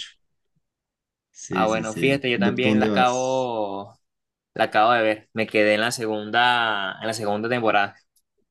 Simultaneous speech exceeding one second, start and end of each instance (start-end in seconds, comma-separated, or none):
1.5-3.5